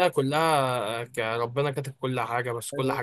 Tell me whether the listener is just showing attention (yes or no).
yes